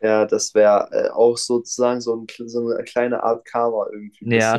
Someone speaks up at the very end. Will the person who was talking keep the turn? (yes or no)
no